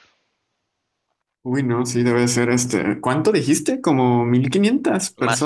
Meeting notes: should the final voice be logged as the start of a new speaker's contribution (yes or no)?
yes